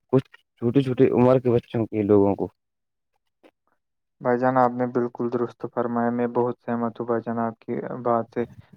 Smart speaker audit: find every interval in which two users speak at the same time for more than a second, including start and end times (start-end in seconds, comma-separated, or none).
none